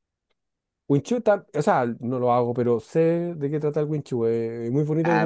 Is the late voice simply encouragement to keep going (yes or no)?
no